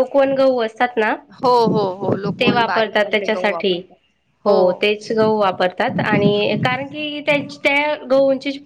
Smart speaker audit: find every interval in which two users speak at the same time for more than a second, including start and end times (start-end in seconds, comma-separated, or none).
2.4-3.8